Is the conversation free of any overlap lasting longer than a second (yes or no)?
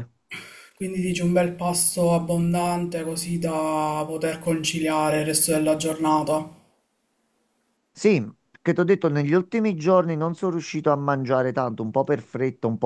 yes